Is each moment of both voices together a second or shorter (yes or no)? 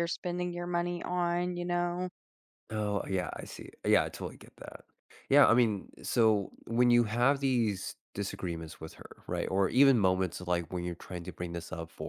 yes